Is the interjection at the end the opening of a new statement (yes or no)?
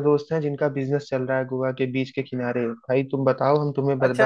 yes